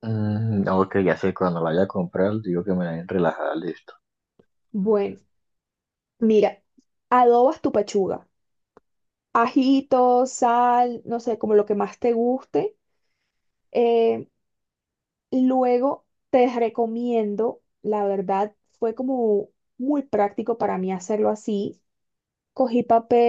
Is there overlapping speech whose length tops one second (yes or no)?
no